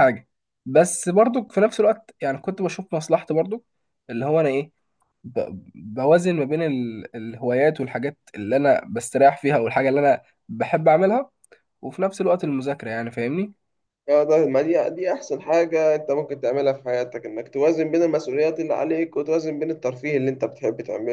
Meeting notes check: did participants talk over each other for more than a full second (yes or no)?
no